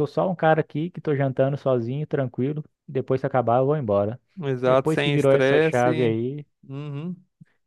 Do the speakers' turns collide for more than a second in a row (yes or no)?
yes